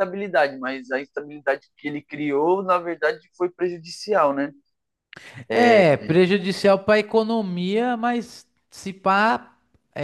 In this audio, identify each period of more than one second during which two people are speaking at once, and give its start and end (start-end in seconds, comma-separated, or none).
none